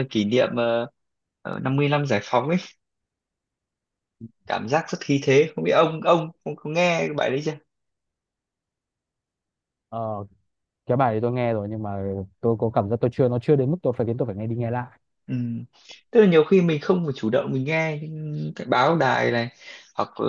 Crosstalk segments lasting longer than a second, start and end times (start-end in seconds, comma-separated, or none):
none